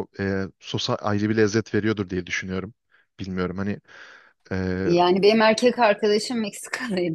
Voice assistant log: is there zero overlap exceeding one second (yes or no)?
yes